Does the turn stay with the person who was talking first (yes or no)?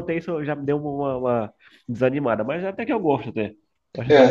no